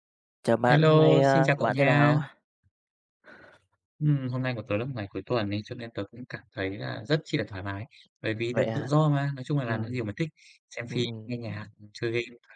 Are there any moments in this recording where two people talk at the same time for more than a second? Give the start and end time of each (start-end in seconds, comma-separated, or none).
0.6-2.2